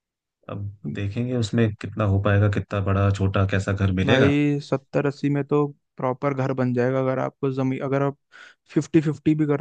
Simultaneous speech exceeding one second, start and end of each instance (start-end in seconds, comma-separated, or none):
none